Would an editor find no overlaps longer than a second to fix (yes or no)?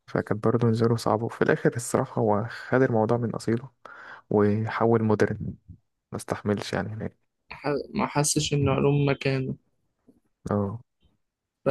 yes